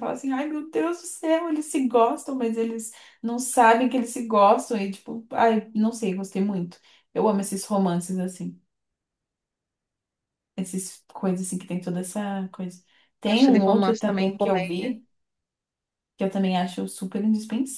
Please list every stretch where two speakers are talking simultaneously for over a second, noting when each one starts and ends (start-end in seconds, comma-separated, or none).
13.2-14.9